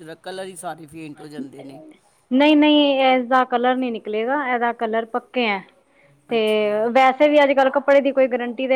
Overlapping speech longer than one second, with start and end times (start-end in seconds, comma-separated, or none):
none